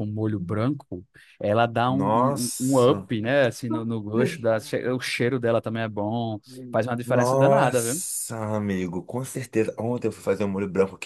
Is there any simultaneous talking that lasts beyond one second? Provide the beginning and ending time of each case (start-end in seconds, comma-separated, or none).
1.9-3.1, 6.5-8.0